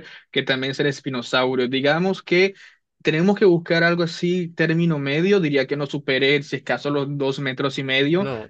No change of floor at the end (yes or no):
yes